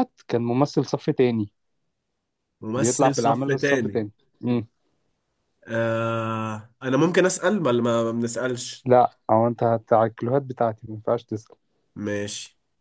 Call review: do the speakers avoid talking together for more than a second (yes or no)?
no